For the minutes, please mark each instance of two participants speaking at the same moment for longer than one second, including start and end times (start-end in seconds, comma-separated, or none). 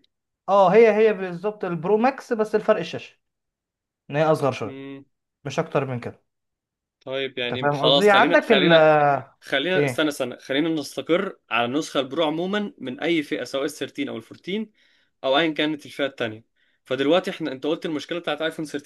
7.4-8.9